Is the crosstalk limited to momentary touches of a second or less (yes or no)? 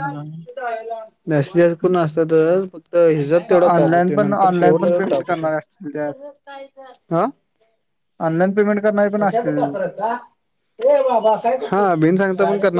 no